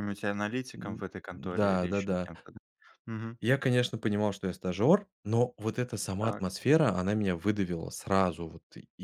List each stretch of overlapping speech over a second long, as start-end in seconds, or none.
0.8-2.3